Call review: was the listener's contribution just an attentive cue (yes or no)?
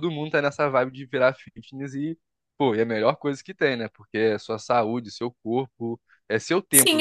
no